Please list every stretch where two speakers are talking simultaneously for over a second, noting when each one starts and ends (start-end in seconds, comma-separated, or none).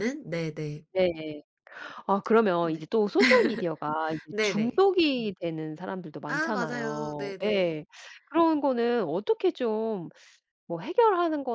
6.3-7.8